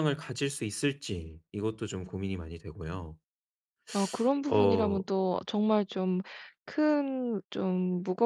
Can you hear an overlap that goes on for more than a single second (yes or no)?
no